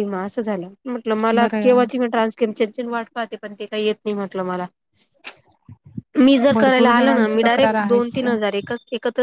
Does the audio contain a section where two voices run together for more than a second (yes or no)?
yes